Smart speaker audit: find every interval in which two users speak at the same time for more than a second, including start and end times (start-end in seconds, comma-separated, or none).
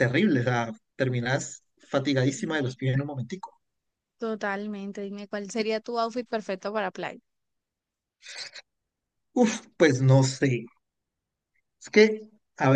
none